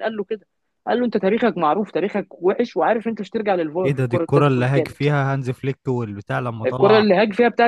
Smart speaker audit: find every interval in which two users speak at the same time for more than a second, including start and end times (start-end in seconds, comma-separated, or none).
3.8-5.0